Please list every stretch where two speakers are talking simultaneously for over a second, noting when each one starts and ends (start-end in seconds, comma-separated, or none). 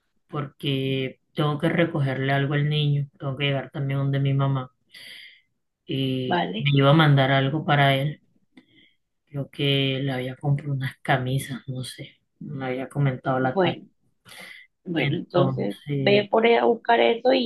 14.9-16.3